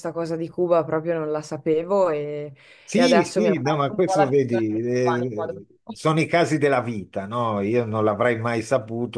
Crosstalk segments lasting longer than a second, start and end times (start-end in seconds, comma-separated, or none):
2.9-6.0